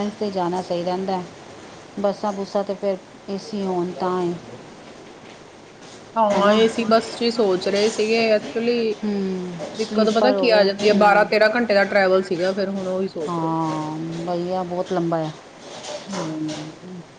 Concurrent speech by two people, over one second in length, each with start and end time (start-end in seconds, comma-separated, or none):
9.8-11.2